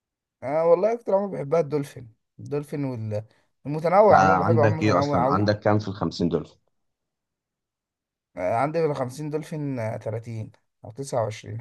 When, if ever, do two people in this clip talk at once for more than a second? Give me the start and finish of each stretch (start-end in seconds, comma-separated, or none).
4.1-5.5